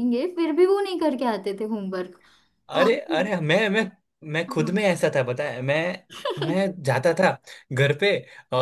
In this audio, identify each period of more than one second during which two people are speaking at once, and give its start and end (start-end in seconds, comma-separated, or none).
none